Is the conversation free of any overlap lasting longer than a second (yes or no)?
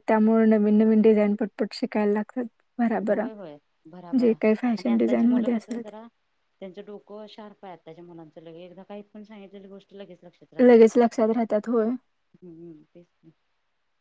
no